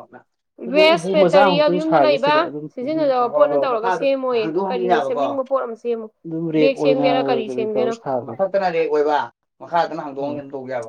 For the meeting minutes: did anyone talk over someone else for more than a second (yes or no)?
yes